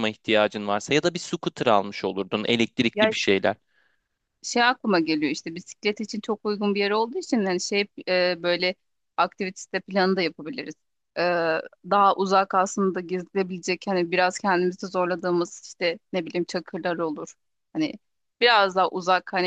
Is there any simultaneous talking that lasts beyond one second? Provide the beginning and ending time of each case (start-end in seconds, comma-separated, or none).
none